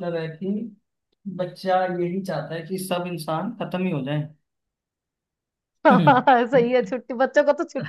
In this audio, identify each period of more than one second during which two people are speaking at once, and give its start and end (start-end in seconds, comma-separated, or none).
none